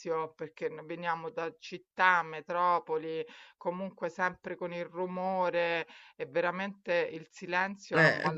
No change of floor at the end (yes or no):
yes